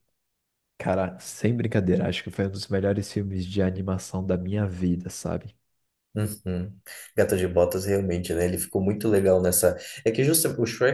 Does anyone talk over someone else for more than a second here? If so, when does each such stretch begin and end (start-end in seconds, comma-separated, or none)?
none